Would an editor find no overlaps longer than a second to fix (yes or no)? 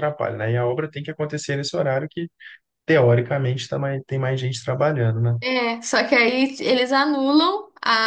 yes